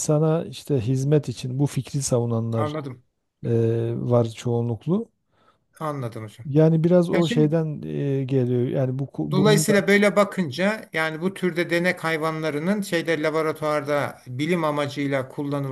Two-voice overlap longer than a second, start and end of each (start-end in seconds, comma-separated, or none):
none